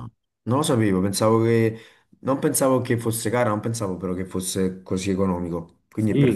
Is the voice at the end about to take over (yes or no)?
yes